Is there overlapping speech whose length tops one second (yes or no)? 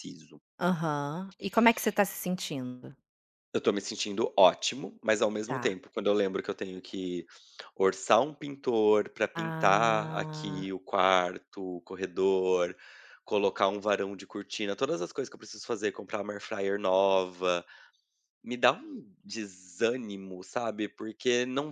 yes